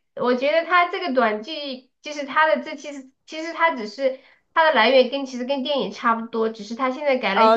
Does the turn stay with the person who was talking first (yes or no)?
no